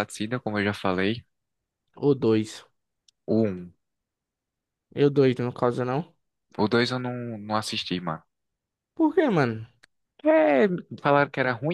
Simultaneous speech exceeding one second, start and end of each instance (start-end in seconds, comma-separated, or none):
none